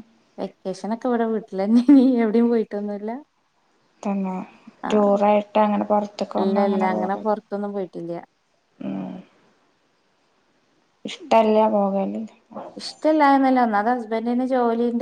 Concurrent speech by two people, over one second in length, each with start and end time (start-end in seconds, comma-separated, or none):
none